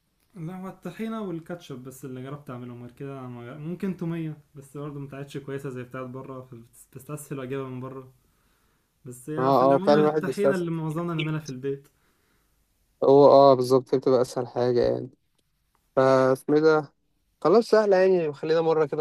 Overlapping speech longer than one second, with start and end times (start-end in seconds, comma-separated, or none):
9.4-10.8